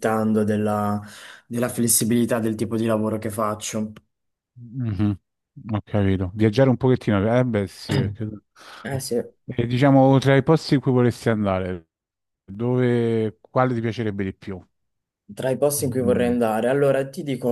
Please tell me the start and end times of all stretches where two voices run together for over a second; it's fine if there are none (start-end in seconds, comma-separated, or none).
none